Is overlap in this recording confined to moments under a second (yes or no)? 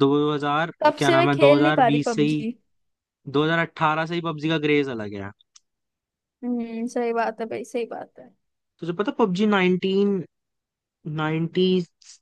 no